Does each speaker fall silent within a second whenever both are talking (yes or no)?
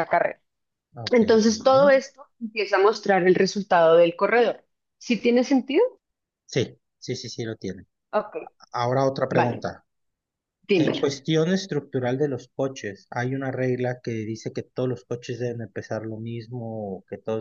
yes